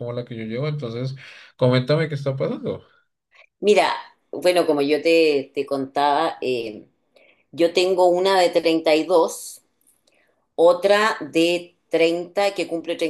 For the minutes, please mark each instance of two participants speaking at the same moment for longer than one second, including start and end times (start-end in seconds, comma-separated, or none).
none